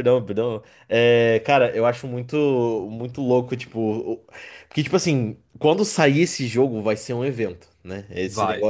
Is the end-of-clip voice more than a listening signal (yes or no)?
no